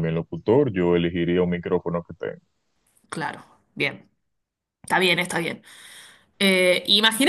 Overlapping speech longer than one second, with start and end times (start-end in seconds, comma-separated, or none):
none